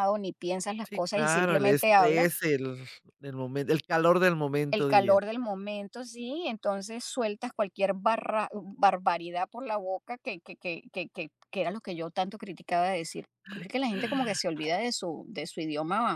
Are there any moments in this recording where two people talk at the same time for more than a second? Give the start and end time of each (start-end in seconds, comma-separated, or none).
0.8-2.3